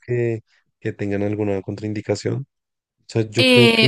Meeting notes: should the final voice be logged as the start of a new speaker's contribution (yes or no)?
yes